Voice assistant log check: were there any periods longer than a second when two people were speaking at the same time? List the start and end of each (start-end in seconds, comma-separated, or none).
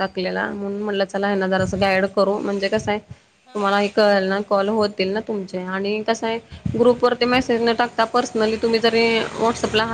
3.5-5.8